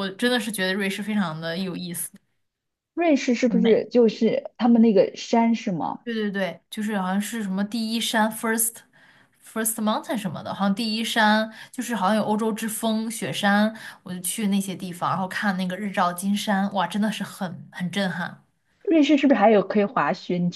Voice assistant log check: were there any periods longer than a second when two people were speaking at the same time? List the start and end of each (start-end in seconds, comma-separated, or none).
none